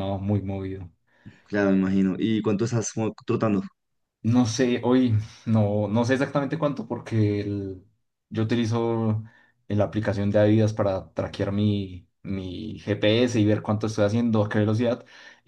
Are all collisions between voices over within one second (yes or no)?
yes